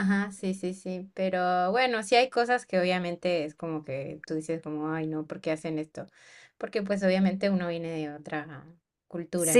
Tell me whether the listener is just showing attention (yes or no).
no